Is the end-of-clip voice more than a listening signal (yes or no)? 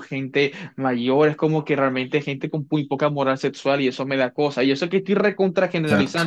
no